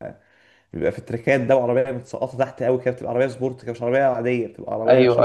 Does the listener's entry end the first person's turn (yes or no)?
yes